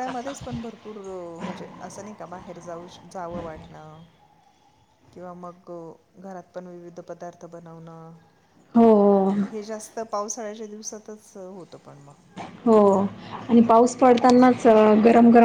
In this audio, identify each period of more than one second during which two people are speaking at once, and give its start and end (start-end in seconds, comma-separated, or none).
none